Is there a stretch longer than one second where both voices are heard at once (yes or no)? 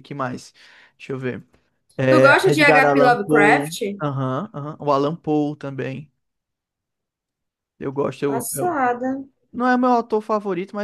yes